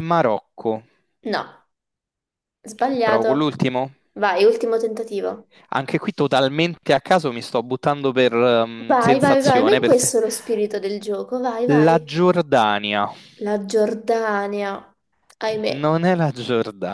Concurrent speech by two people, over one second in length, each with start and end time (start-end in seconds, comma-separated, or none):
8.9-10.1